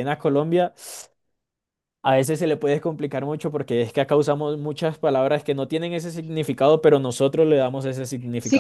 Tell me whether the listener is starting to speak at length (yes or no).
yes